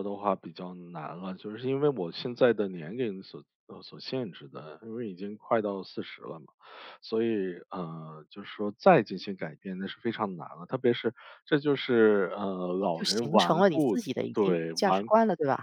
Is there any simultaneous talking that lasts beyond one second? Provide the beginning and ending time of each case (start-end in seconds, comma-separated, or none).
12.9-15.1